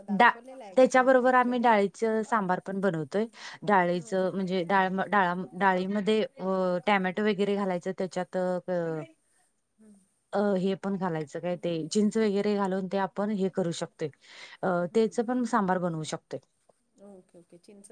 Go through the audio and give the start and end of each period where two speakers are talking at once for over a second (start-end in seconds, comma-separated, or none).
none